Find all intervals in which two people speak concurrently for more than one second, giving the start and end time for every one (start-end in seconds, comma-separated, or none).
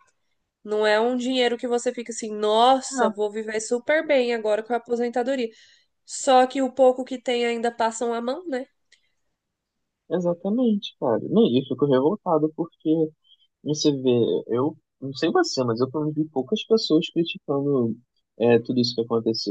none